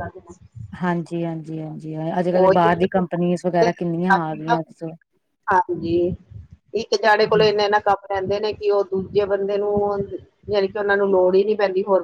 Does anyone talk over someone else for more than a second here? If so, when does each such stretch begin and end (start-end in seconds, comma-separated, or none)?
none